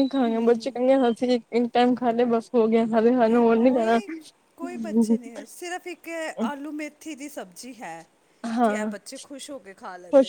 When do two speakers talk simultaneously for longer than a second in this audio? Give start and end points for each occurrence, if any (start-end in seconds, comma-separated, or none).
none